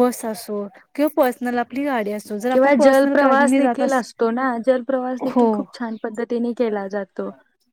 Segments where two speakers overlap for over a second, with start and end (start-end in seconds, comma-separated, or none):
2.5-3.8